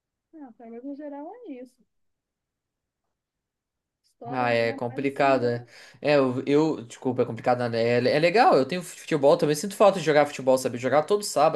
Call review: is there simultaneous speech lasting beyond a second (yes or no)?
yes